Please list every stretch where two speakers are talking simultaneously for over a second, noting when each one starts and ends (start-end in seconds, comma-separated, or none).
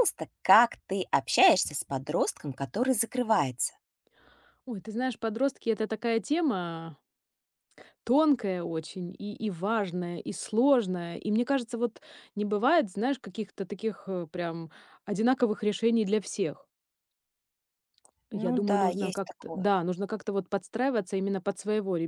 18.3-19.7